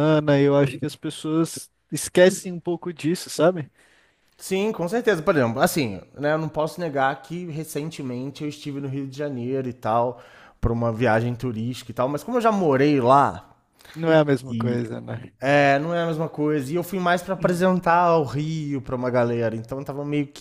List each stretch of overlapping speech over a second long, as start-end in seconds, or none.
none